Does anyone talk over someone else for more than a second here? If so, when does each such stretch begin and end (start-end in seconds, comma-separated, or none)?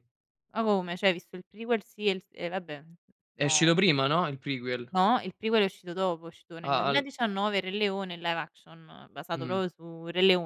none